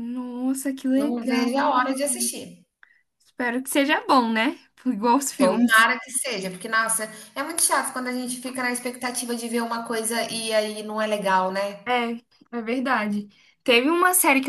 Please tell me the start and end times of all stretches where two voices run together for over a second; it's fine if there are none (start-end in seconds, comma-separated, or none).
none